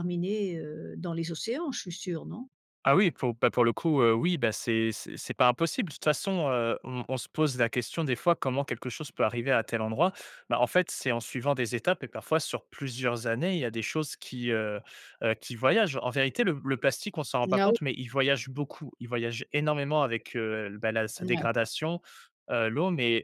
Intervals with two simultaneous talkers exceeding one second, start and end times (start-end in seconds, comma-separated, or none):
none